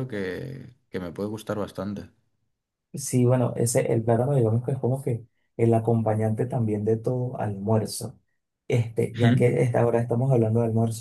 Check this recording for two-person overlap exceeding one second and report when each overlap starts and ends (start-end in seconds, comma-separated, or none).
none